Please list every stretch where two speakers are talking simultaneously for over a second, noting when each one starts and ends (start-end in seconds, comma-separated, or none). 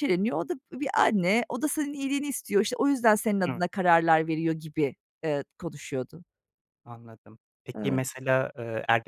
none